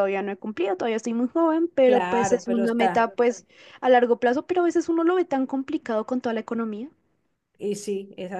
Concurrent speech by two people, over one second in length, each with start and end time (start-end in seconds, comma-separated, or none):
1.8-3.1